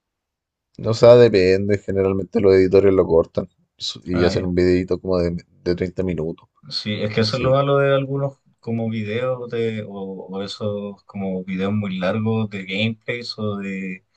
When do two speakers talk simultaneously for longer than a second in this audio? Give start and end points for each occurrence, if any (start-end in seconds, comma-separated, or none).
none